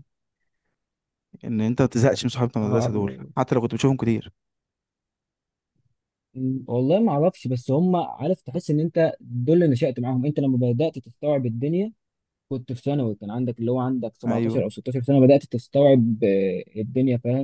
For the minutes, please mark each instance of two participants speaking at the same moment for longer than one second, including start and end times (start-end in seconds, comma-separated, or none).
none